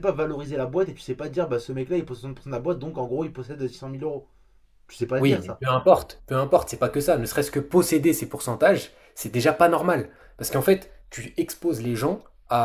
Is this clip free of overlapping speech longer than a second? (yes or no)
yes